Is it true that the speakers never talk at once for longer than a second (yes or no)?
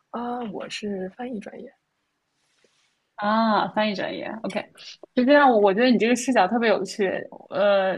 yes